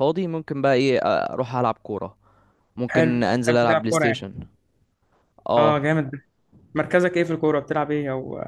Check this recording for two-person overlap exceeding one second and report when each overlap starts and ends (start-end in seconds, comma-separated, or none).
2.9-4.2